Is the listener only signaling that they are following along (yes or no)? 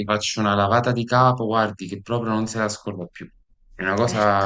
yes